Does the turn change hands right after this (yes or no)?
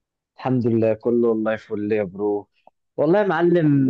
no